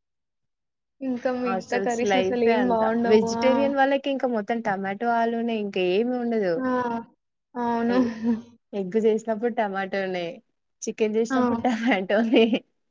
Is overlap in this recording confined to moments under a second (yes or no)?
no